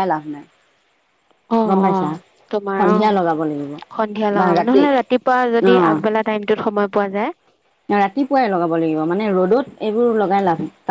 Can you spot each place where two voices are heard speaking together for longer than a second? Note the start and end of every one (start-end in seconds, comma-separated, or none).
none